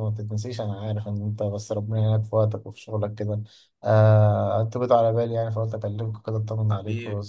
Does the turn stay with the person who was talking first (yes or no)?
no